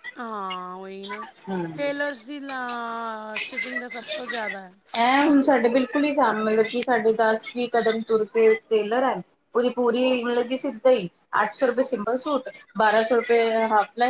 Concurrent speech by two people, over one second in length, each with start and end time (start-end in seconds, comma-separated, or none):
none